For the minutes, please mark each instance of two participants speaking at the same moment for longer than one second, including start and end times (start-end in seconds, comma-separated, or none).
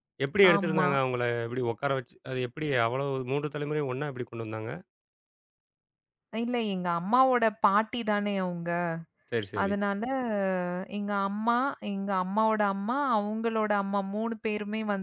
none